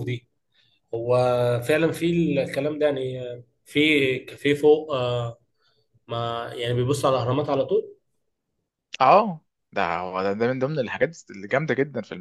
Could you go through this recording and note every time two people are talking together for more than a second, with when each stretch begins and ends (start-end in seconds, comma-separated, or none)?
none